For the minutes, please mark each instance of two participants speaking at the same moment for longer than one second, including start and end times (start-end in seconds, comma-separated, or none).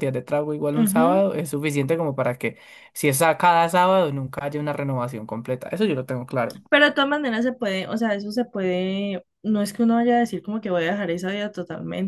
none